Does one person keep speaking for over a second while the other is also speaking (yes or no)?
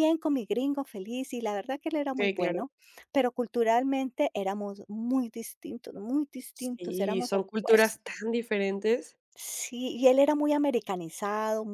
yes